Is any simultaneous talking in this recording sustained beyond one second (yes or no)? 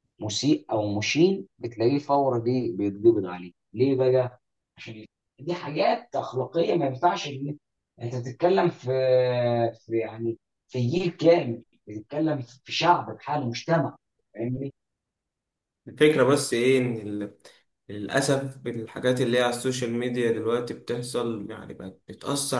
no